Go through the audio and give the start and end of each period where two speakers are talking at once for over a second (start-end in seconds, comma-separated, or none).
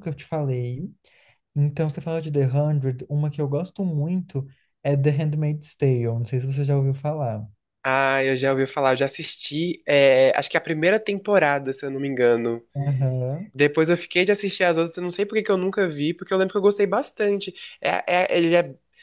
none